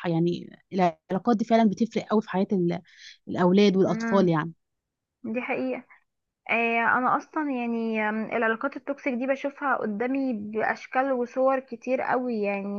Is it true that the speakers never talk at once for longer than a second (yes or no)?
yes